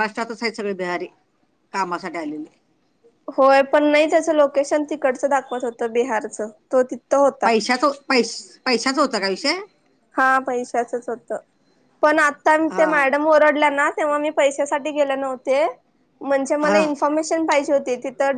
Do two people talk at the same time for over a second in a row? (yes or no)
no